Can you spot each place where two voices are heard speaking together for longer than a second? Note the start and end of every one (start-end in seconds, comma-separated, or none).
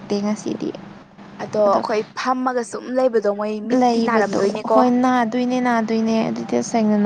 none